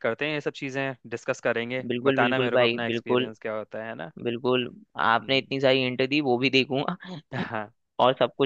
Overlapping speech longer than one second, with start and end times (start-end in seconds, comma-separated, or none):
1.9-3.3